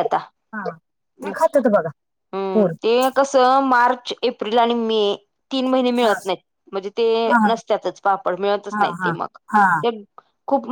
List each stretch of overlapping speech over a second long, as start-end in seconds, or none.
none